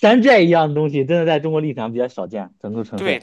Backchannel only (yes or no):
no